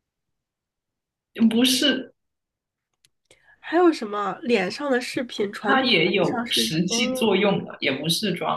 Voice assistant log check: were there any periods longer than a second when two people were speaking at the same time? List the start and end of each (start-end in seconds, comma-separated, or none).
5.7-7.4